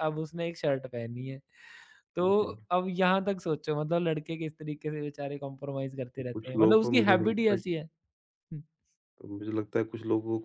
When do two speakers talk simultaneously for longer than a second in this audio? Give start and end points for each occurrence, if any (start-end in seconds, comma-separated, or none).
6.3-7.6